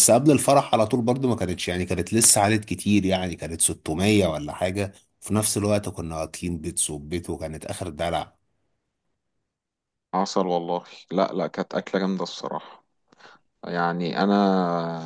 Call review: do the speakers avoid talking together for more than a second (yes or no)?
yes